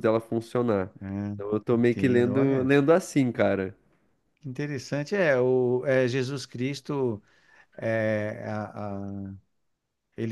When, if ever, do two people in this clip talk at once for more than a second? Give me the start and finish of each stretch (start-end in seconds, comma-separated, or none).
1.3-2.7